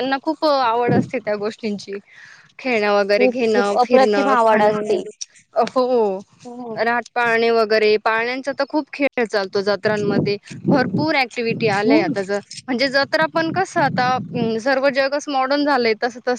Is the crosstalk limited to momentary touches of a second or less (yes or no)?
no